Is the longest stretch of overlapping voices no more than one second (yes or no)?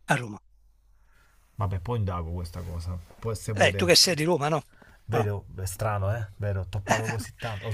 yes